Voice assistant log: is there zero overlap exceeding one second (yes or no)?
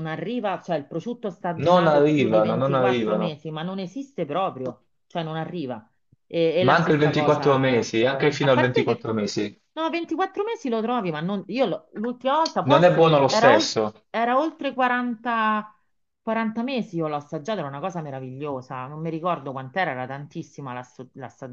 no